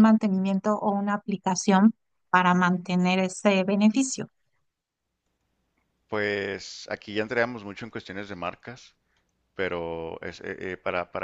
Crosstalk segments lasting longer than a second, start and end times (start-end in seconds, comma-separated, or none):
none